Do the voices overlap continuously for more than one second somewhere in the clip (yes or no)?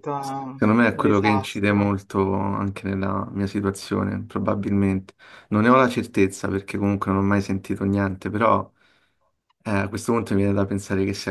yes